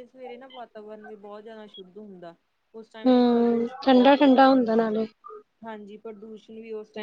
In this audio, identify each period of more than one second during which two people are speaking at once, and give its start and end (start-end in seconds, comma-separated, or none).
2.9-4.9